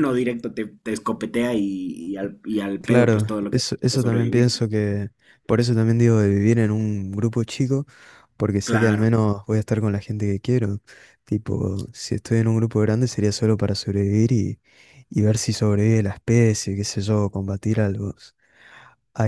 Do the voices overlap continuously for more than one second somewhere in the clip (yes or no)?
yes